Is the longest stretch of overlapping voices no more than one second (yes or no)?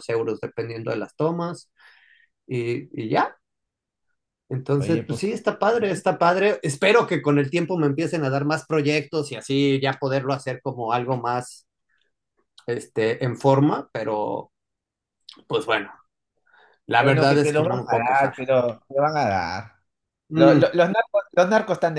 no